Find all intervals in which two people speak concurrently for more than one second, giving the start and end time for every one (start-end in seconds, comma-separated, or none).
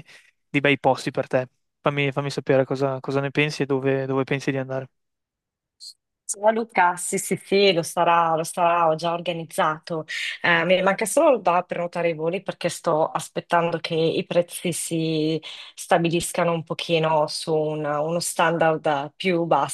none